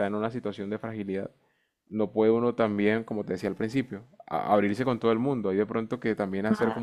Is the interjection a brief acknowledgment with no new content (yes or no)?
yes